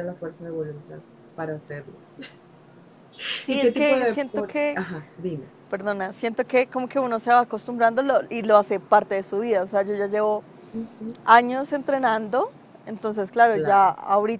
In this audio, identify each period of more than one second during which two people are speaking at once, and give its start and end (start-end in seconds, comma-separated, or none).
3.5-4.8